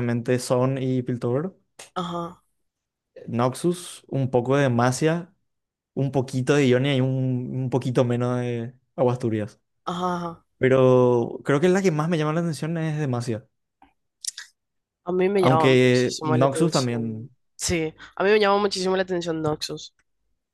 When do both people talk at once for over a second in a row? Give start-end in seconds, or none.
15.4-17.3